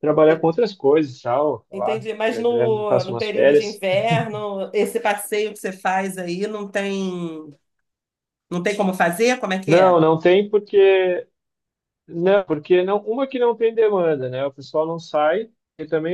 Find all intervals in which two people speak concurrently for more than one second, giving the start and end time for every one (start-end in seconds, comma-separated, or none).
1.7-3.8